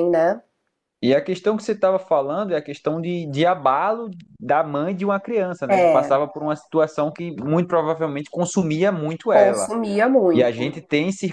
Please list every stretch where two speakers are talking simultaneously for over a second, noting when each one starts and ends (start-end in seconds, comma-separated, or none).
none